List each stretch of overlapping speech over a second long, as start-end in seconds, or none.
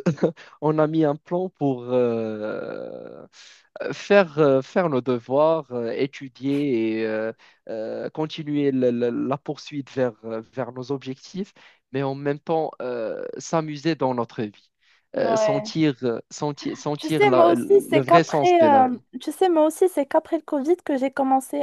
17.0-19.0